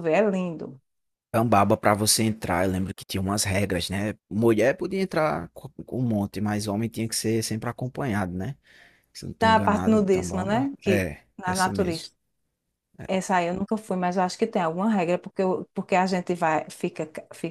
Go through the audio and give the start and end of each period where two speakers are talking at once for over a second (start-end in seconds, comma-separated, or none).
9.4-12.1